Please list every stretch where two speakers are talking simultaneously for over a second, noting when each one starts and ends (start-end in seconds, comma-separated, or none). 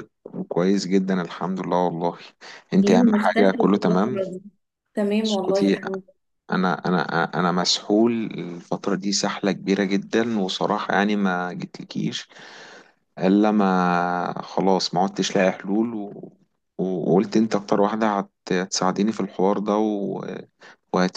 2.8-4.2